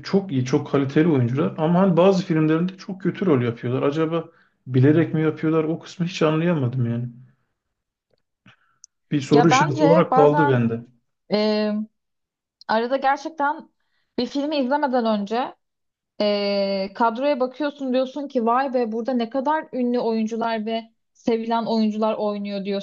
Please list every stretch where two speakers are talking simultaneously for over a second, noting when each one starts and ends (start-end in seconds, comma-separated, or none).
9.3-10.6